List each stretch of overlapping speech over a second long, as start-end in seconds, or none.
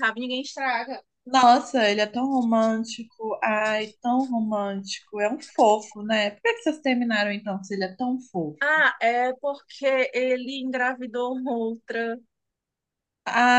none